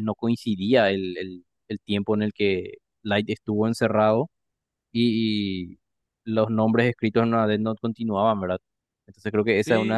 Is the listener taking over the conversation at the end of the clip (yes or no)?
yes